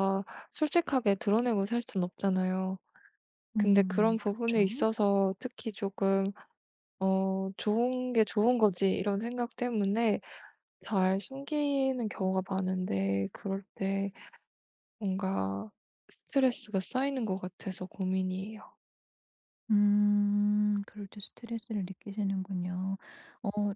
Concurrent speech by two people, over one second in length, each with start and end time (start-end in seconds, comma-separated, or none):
3.6-4.9